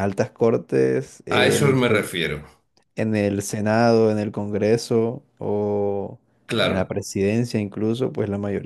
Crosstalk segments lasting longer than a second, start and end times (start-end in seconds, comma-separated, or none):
none